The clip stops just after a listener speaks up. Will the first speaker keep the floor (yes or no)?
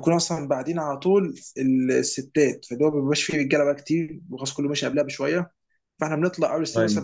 yes